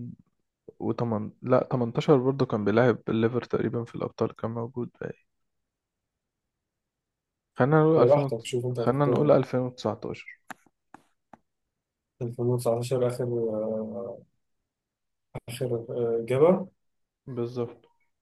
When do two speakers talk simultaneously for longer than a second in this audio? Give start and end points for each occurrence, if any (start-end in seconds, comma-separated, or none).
8.0-9.3